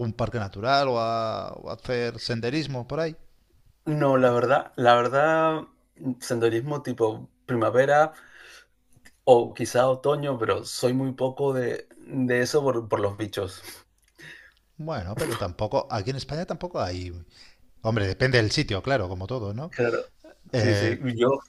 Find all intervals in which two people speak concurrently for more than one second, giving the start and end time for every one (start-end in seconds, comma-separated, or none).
none